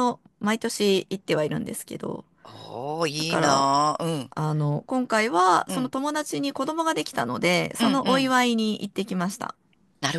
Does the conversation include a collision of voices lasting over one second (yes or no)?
no